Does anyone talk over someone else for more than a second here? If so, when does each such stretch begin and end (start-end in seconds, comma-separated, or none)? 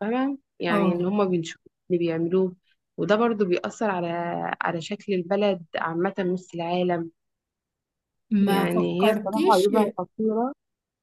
8.5-9.7